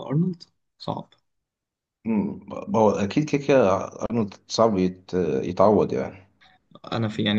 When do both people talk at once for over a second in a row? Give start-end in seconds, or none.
none